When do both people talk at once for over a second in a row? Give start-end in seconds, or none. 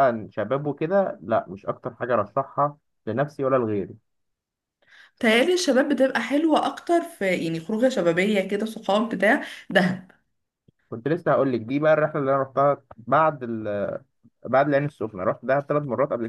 none